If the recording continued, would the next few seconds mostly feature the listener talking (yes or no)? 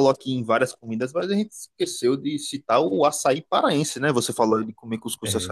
no